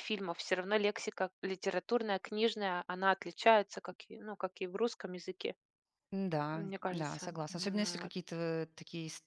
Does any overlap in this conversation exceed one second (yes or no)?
yes